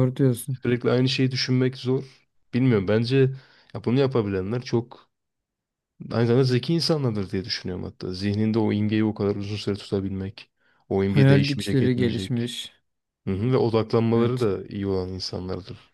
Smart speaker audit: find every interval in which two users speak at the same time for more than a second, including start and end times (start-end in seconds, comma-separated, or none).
11.1-12.5